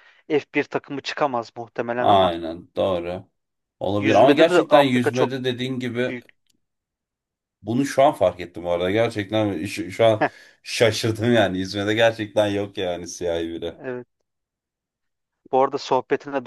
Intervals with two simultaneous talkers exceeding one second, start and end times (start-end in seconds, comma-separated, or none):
4.0-5.3